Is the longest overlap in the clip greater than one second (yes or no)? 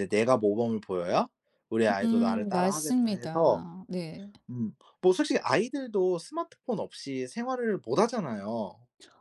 yes